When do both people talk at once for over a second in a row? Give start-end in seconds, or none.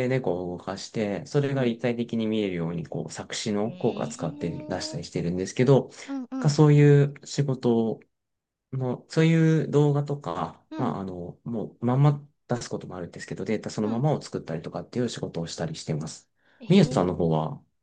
3.6-5.2